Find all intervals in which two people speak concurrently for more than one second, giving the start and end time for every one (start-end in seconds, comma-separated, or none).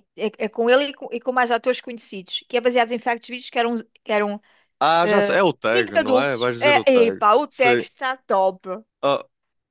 5.0-7.8